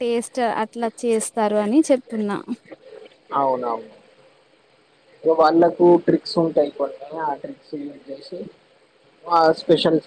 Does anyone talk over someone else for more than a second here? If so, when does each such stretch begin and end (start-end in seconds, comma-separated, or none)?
none